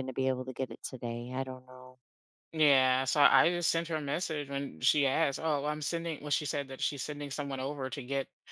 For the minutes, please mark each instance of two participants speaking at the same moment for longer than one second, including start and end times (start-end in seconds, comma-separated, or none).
none